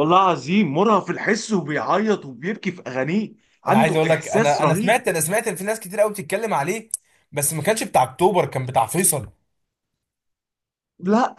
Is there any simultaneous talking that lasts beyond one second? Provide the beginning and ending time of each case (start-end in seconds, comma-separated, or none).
3.7-5.0